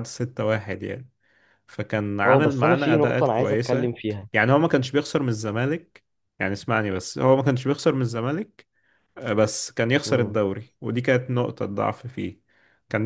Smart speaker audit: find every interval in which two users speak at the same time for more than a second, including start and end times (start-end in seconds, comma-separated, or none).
2.2-3.9